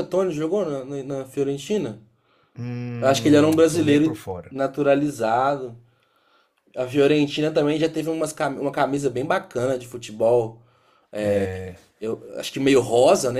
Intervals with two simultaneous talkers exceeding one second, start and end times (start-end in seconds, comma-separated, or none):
3.0-4.6